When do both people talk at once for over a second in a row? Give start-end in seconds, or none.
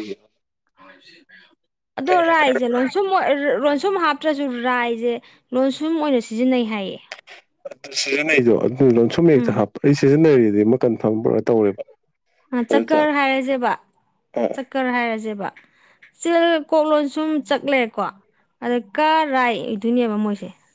none